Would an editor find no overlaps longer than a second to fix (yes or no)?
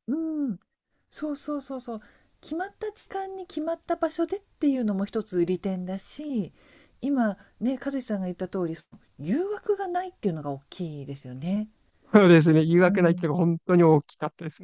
yes